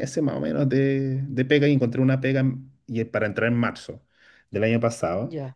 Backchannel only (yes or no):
yes